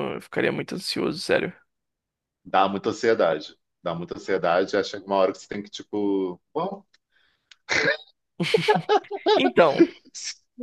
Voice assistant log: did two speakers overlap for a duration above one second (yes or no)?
no